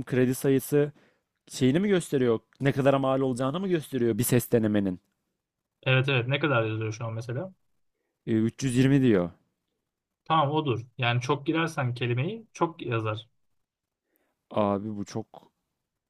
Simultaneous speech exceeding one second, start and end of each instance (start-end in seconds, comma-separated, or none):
none